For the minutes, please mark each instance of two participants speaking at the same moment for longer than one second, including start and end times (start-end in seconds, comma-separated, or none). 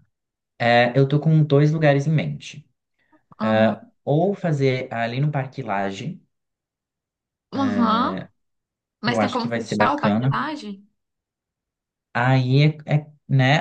9.1-10.3